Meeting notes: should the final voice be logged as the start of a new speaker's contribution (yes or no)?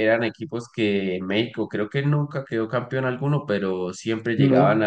no